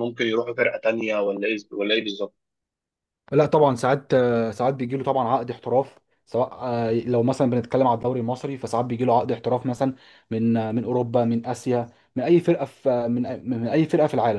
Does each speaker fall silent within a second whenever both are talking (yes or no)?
yes